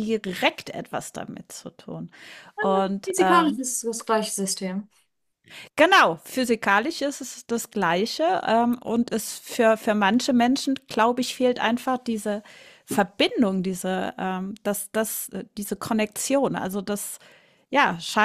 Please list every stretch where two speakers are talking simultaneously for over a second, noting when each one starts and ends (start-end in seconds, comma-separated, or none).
none